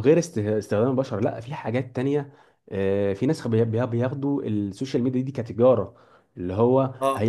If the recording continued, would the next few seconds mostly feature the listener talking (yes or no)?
no